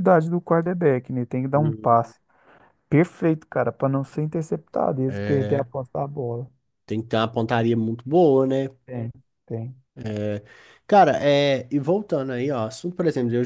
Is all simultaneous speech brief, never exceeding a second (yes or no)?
yes